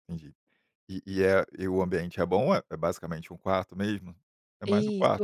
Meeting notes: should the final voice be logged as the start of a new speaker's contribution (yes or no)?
yes